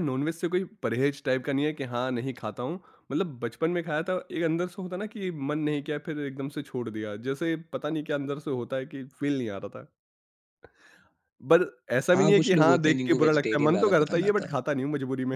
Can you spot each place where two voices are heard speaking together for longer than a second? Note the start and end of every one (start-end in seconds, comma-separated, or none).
12.1-14.5